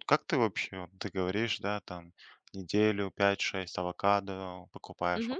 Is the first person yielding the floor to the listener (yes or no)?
no